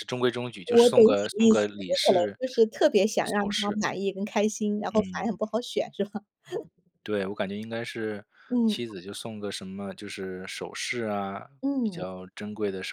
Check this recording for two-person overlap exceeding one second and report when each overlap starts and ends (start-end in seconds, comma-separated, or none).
0.7-2.4